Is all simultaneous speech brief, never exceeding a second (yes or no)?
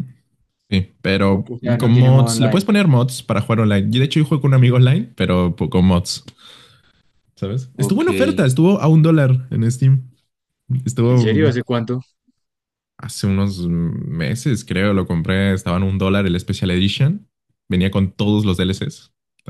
no